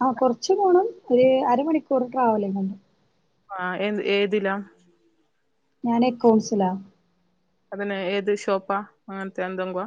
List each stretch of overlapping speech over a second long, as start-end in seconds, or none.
none